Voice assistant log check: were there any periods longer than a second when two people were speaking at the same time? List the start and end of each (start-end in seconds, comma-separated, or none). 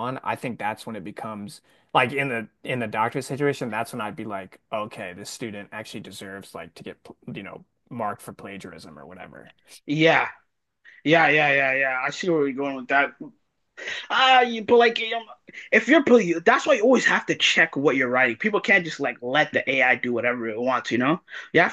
none